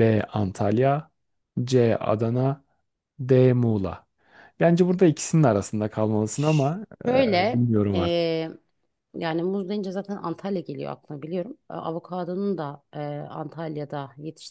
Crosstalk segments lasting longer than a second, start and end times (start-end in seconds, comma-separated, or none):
7.1-8.4